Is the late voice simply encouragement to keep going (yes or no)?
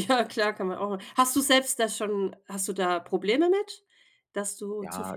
no